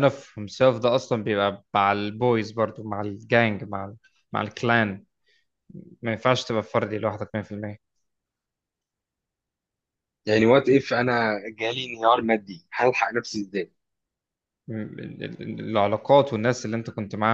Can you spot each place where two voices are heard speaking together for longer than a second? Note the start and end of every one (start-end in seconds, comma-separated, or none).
none